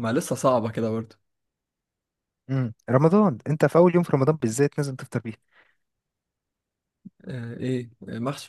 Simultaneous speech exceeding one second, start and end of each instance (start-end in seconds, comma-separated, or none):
none